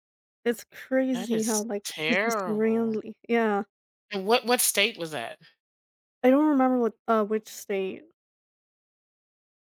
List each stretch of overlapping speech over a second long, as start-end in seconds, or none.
1.1-3.0